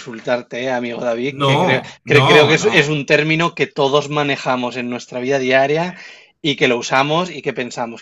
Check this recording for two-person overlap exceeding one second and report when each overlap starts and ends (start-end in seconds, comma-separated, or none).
1.3-2.9